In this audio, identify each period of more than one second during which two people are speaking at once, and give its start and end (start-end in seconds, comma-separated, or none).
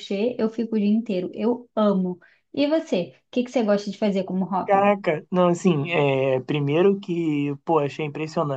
none